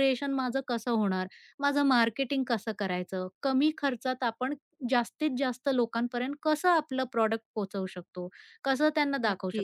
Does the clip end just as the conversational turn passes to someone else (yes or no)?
no